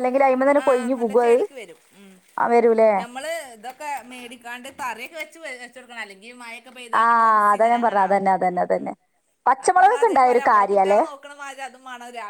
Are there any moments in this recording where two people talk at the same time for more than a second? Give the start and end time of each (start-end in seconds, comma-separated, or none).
9.6-11.0